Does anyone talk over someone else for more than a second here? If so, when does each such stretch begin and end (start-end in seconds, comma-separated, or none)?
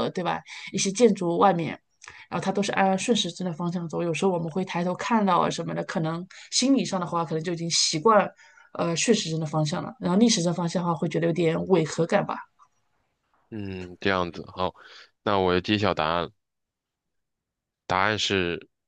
none